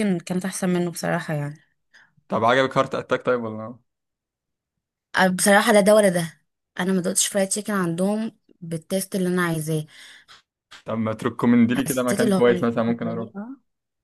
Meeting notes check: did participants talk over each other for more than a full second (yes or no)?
yes